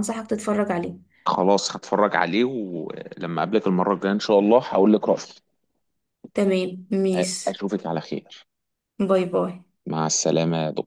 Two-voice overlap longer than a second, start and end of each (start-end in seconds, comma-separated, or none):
none